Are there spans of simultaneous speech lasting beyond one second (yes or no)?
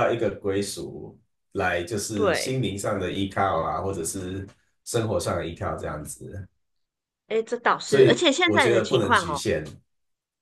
yes